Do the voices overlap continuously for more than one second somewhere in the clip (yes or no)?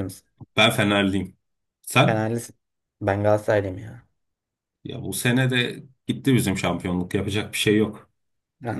no